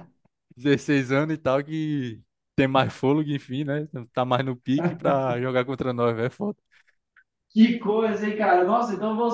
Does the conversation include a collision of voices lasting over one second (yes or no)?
no